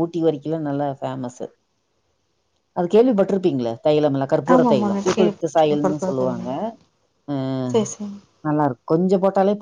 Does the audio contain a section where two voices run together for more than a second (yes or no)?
yes